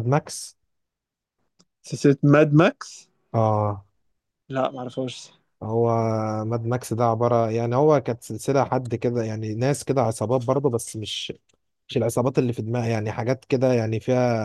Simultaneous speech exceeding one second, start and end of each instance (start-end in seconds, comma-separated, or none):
none